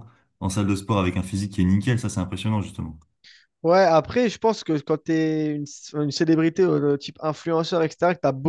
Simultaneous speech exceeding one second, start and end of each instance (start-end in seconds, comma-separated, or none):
none